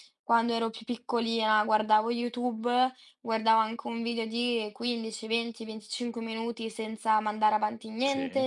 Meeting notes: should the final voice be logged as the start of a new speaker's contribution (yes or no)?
no